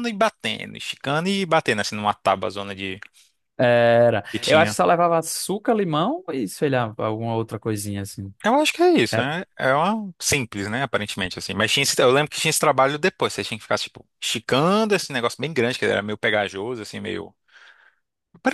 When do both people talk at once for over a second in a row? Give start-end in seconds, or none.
none